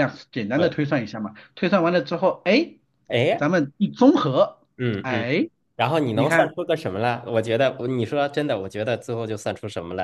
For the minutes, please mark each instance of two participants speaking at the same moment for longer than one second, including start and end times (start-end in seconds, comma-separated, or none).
none